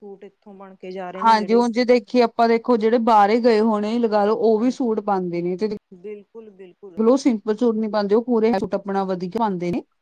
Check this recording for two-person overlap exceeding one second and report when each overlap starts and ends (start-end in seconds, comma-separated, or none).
none